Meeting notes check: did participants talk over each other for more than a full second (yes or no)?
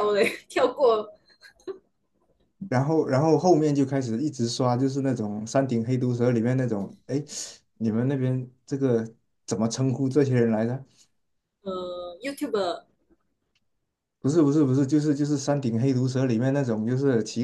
no